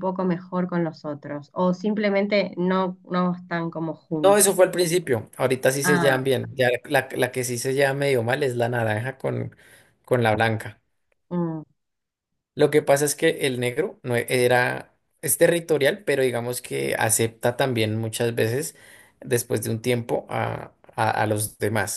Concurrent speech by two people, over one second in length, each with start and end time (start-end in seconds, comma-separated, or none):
none